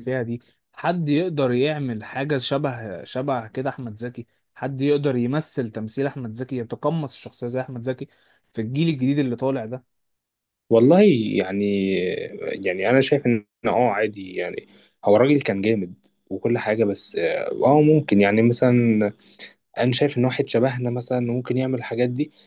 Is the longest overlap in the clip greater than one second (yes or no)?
no